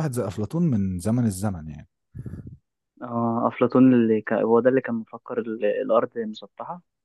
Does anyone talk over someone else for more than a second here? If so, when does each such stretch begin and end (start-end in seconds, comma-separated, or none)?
none